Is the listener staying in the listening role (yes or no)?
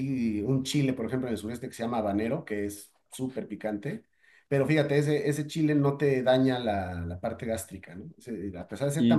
no